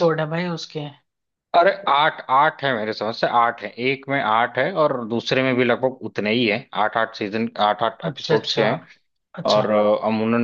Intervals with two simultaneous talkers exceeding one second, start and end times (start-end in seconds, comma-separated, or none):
none